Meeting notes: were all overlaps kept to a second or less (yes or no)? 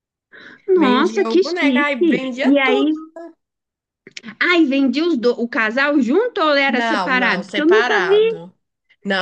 no